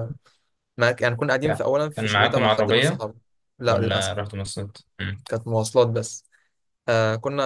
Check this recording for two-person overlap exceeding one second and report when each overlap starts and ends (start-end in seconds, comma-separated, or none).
1.4-3.0